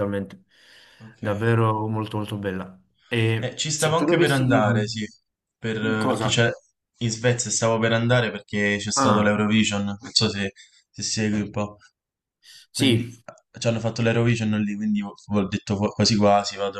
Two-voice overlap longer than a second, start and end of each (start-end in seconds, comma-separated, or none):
3.4-5.0